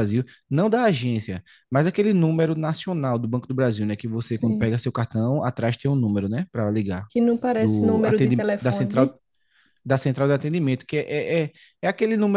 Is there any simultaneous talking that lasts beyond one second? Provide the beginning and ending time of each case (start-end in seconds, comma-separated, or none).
7.6-9.1